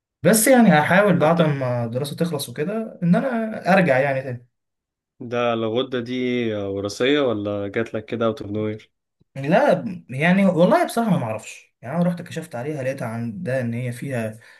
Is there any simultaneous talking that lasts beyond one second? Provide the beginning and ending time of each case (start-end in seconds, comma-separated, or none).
none